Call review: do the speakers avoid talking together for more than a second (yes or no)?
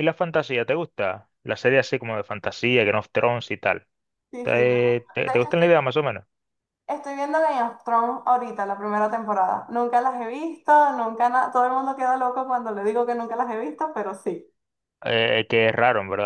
no